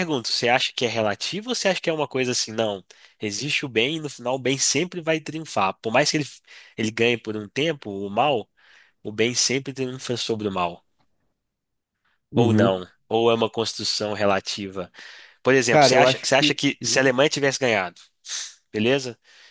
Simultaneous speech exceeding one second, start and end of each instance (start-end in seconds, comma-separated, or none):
15.7-17.1